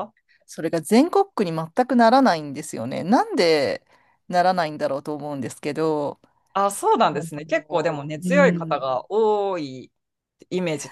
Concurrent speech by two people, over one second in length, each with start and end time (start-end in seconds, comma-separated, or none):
7.1-8.8